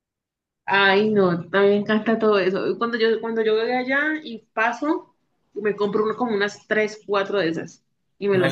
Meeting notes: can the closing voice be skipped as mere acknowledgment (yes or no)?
no